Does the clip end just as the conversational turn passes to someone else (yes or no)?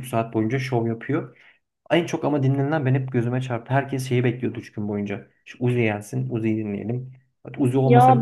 yes